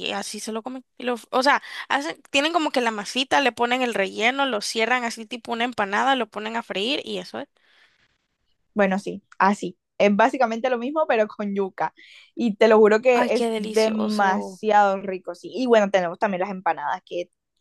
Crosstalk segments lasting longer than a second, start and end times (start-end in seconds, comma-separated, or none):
13.2-14.6